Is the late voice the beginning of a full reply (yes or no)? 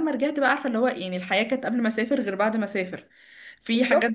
no